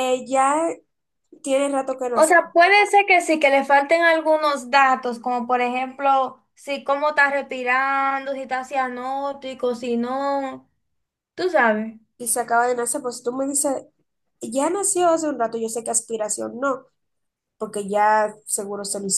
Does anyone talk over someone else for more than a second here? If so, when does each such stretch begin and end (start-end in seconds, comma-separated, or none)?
none